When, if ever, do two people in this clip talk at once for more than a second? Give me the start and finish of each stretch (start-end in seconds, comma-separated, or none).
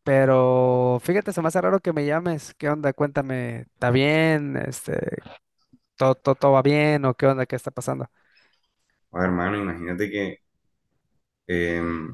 none